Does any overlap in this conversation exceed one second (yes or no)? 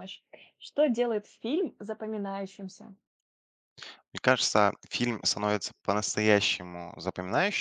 no